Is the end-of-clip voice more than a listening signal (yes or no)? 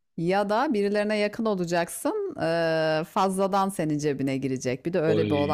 yes